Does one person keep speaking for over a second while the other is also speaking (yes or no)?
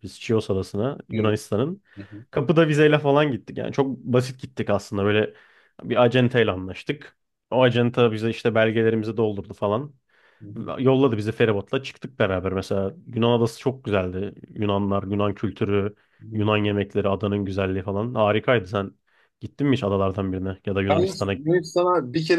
no